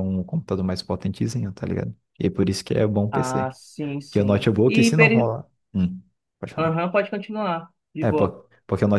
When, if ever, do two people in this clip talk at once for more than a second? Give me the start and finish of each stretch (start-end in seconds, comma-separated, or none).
4.1-5.4